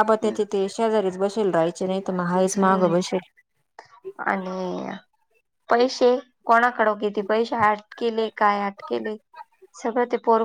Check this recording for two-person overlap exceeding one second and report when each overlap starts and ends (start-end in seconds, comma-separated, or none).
none